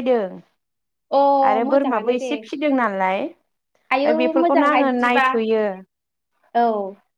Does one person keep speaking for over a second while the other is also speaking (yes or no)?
yes